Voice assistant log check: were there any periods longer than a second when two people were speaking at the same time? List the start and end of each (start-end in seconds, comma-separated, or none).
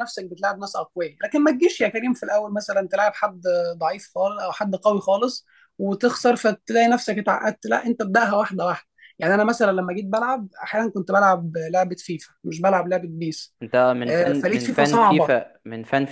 14.1-15.4